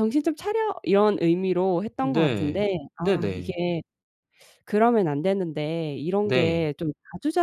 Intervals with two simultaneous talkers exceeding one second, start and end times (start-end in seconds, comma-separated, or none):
2.0-3.6